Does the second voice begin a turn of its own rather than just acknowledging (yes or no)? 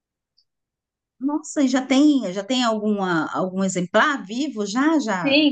yes